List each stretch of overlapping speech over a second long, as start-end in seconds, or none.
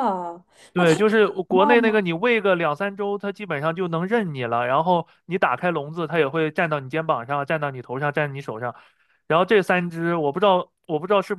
0.7-2.0